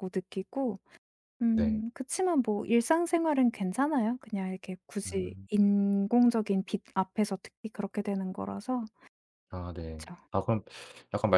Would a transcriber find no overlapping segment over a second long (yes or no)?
yes